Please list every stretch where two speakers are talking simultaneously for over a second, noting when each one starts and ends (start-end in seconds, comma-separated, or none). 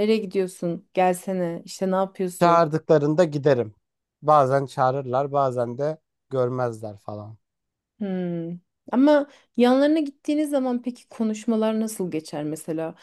none